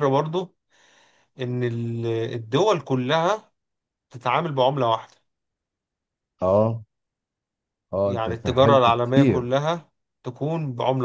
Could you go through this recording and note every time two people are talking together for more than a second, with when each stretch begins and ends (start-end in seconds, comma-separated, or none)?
8.1-9.5